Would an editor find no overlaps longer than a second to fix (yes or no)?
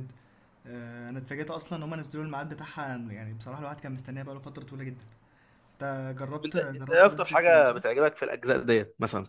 no